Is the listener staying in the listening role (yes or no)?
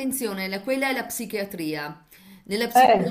yes